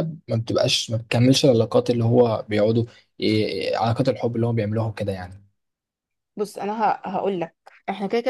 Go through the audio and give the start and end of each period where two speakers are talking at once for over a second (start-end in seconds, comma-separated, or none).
none